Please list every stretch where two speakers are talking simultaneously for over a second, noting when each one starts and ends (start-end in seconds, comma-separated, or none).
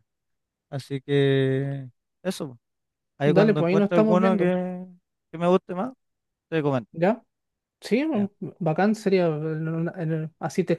3.2-4.5